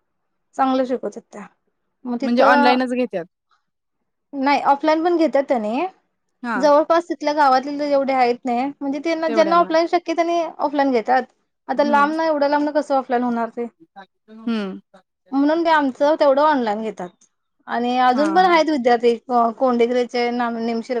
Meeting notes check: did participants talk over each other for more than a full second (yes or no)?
no